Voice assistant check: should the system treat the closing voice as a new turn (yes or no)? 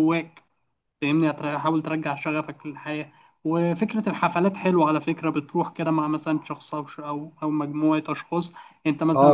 yes